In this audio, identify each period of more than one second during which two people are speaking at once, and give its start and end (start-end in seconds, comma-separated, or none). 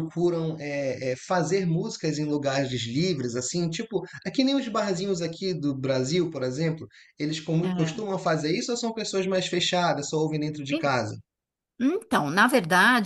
none